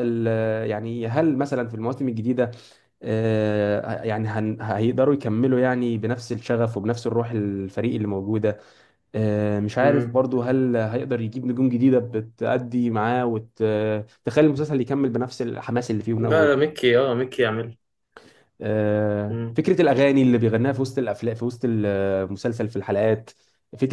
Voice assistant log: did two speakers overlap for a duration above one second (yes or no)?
no